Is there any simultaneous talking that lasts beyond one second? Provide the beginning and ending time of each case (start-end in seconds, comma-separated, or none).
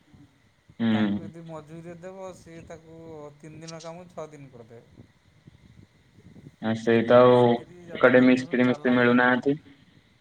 8.0-9.6